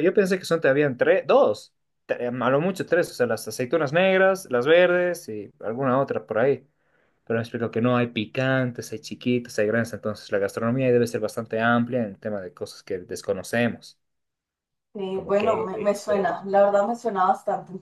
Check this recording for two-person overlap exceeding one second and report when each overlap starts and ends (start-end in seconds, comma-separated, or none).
15.1-16.4